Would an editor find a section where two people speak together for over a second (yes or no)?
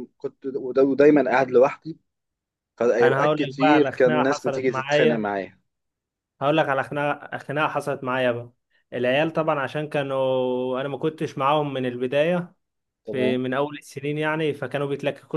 yes